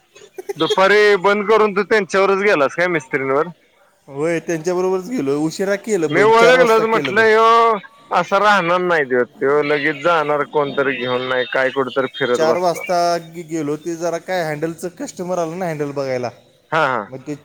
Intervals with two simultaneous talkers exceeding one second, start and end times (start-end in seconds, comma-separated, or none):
none